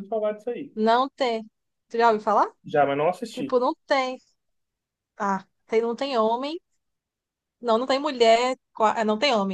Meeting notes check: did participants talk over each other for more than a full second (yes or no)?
no